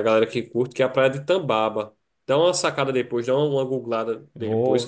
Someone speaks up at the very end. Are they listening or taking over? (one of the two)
taking over